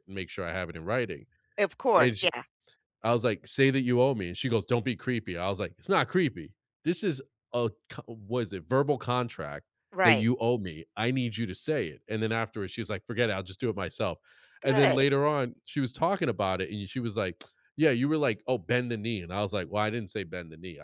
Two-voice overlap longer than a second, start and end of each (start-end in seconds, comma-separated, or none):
none